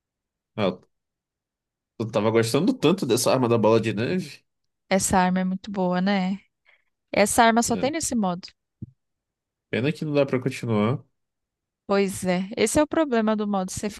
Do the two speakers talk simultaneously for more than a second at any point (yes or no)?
no